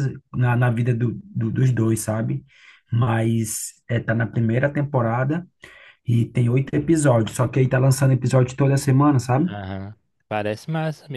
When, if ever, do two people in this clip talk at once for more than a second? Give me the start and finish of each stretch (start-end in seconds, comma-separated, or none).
none